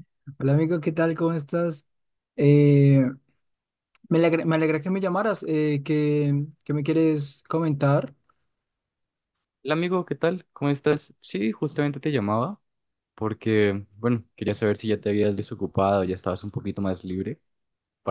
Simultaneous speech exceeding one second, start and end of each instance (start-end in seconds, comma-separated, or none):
none